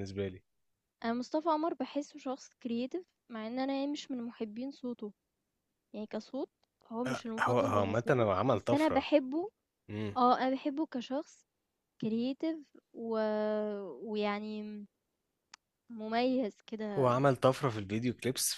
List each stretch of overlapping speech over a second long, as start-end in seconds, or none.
7.1-9.1